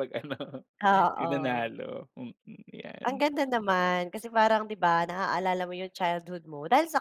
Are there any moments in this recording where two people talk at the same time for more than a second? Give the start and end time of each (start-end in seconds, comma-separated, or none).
none